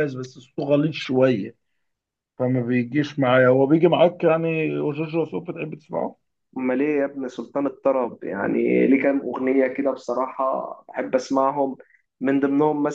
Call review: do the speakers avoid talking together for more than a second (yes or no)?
yes